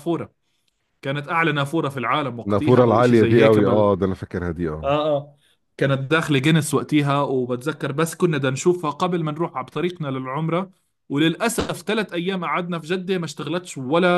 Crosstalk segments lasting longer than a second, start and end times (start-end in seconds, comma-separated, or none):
2.5-3.9